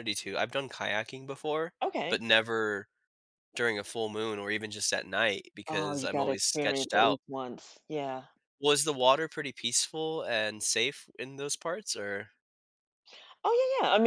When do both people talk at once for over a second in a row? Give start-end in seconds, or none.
5.7-7.2